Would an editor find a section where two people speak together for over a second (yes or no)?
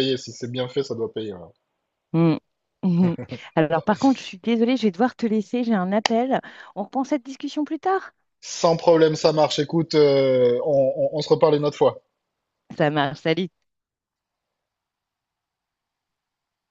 no